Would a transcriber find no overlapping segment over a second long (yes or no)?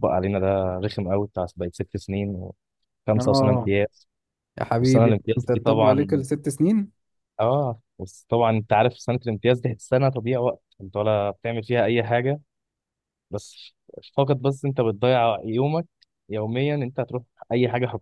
no